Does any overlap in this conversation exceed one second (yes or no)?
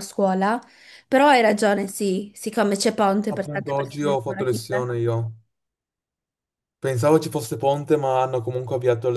yes